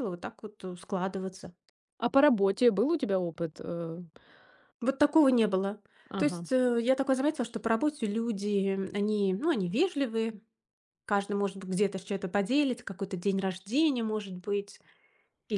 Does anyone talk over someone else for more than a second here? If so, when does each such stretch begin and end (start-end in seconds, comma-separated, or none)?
none